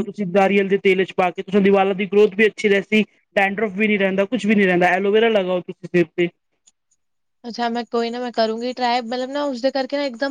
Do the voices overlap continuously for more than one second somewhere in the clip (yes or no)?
no